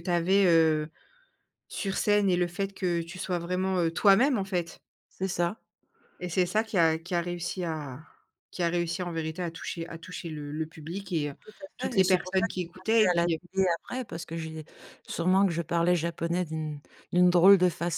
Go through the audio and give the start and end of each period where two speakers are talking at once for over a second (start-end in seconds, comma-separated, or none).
11.8-13.4